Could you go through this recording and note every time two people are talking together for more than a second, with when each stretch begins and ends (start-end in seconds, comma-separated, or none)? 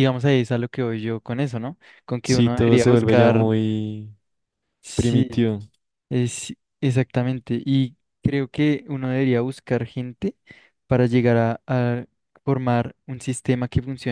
2.2-3.5